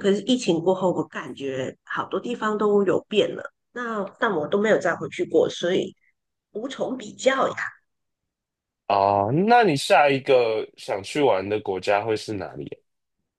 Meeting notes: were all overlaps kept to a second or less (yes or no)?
yes